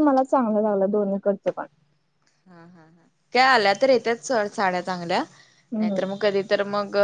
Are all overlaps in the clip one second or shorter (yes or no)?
yes